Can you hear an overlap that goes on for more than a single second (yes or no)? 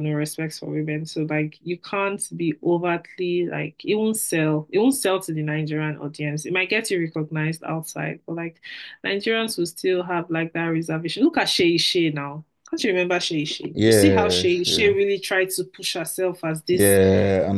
yes